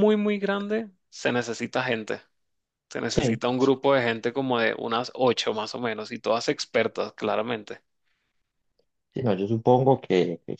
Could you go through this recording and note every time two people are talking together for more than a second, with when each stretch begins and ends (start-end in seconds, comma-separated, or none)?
none